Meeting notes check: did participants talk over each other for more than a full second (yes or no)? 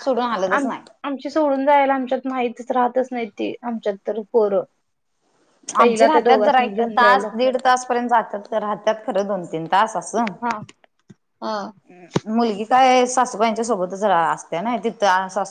yes